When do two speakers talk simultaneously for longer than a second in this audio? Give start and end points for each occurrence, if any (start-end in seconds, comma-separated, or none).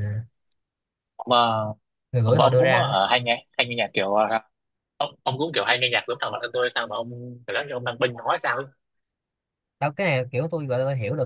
none